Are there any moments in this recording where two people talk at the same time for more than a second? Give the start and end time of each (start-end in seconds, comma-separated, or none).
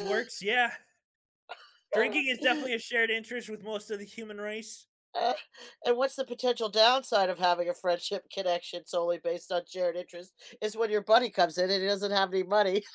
none